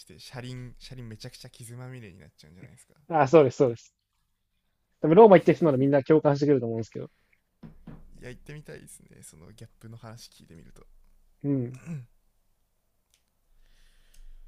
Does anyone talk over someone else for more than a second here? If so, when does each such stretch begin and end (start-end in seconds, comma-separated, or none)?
none